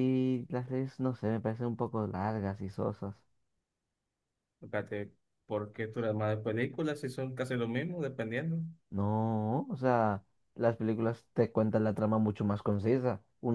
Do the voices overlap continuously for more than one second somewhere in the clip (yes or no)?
no